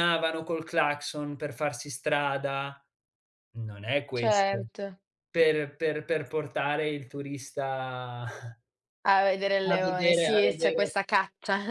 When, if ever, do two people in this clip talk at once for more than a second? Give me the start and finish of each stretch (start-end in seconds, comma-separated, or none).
9.7-10.9